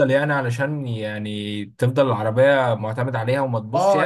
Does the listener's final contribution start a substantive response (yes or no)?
yes